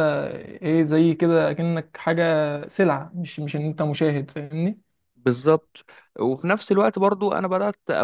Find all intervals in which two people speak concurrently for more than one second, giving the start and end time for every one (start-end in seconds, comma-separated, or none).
none